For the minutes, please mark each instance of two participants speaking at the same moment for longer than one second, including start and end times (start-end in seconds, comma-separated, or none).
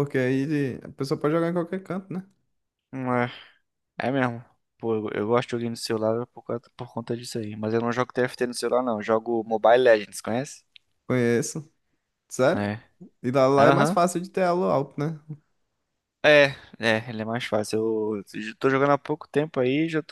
none